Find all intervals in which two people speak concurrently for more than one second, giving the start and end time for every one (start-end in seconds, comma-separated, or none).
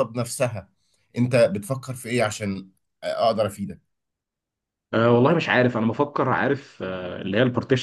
none